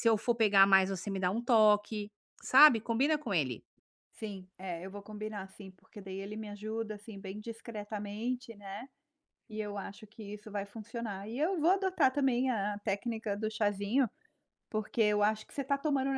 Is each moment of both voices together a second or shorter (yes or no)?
yes